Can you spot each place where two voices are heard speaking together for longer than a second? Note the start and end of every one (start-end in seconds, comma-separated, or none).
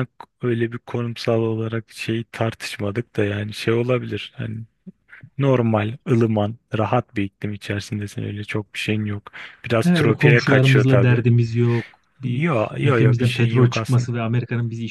9.8-11.2, 12.2-14.1